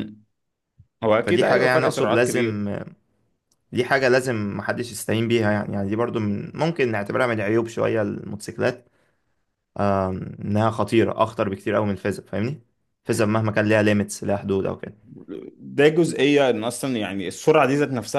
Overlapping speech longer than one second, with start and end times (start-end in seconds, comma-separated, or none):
1.2-2.6